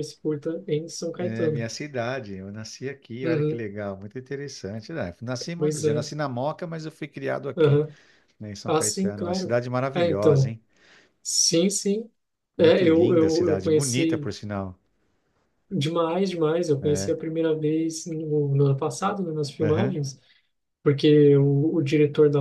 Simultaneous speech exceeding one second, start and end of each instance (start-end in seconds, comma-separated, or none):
8.7-10.6, 12.6-14.3